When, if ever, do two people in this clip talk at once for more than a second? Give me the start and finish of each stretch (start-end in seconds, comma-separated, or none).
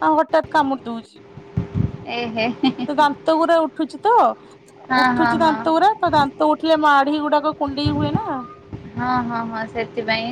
none